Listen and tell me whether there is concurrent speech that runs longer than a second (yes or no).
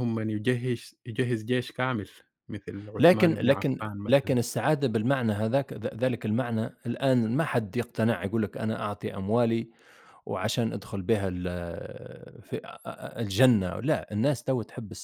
yes